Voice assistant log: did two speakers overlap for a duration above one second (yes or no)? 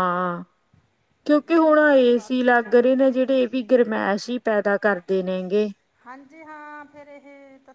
yes